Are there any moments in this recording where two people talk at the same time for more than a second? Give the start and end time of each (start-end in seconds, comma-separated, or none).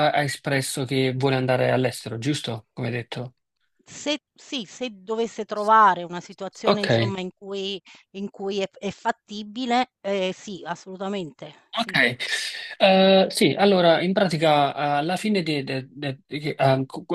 none